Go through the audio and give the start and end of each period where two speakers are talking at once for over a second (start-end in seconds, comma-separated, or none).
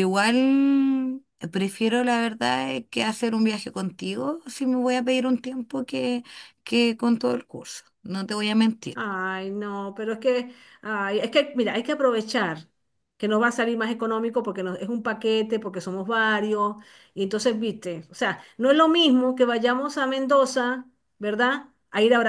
none